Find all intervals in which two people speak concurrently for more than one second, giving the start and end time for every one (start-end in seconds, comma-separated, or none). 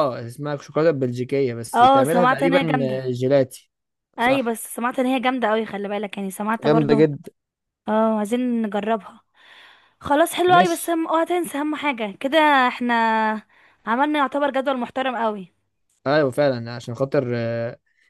1.7-3.1